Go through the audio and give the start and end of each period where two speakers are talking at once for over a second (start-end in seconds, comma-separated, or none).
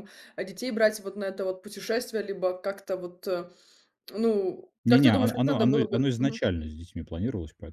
4.8-6.4